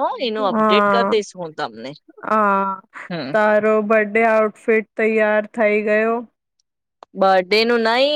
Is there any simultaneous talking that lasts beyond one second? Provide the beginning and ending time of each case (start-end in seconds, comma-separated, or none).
none